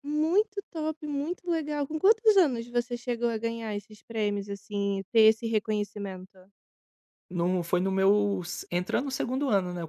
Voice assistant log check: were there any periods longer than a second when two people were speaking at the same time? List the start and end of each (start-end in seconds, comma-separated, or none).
none